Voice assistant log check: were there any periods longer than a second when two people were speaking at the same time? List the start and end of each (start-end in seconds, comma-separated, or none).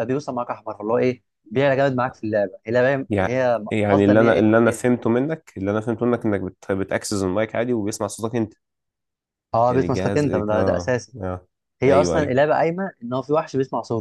3.1-5.0, 9.7-11.2